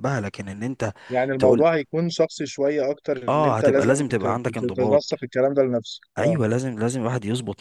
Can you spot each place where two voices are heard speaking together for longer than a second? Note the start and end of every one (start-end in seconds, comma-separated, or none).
3.3-5.0